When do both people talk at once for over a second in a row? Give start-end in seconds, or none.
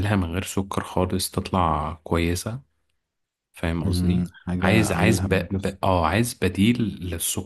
3.8-5.8